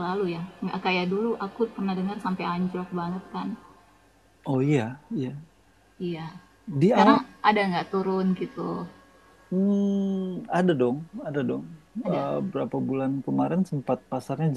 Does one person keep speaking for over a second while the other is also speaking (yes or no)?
no